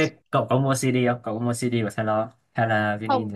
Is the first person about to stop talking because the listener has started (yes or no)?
yes